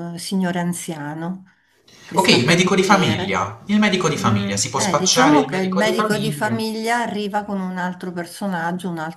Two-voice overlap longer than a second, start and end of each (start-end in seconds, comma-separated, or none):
2.1-3.4, 4.2-6.6